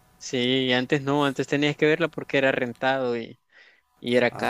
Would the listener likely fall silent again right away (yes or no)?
no